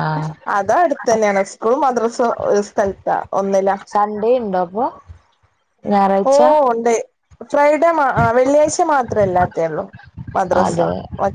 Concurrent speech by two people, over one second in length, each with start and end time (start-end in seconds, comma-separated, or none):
none